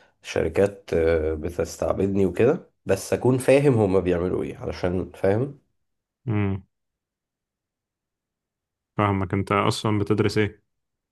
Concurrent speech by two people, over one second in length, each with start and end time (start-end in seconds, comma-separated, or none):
none